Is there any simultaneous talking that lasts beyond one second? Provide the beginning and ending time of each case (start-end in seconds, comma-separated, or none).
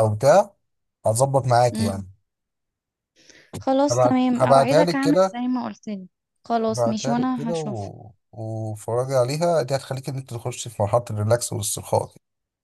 3.9-5.4, 6.7-7.9